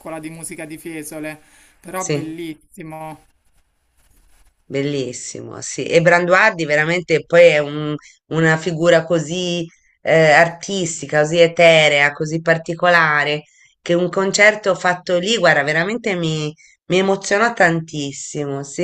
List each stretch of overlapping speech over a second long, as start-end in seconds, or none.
none